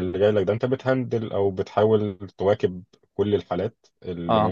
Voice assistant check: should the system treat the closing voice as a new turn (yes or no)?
no